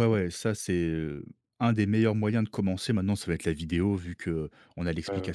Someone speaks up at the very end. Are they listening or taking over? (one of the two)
listening